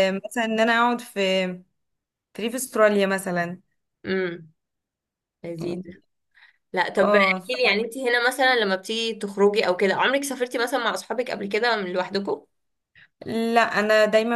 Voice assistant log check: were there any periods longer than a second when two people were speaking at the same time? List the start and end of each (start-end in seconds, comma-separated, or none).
none